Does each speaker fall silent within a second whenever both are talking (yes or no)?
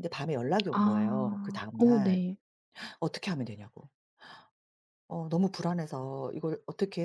no